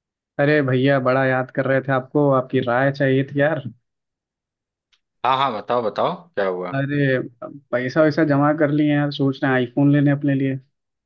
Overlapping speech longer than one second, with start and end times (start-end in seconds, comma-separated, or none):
none